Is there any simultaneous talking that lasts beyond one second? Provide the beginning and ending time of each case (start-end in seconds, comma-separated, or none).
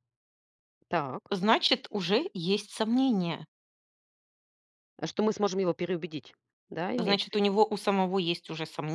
none